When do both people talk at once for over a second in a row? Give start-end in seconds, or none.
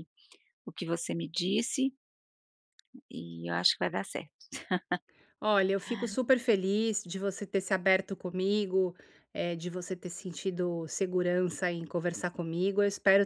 none